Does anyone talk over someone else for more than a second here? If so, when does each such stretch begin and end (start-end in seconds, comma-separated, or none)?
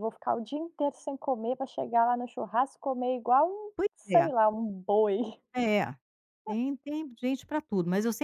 none